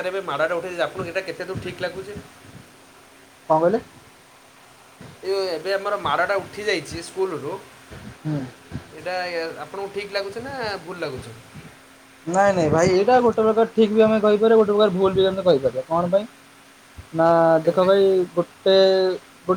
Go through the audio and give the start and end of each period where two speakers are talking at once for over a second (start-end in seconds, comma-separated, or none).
none